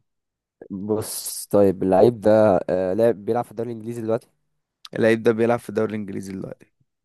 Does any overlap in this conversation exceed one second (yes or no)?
no